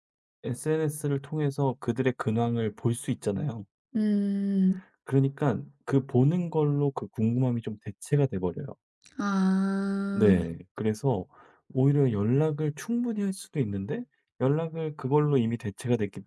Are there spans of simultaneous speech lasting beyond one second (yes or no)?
no